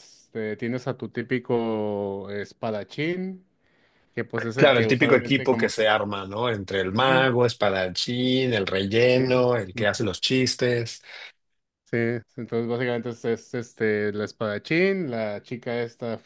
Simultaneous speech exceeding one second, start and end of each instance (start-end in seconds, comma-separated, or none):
4.6-5.9